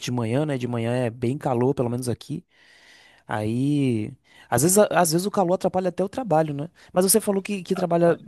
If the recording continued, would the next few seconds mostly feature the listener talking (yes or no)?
no